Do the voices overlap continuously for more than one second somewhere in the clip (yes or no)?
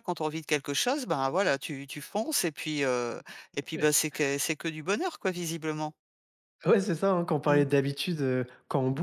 no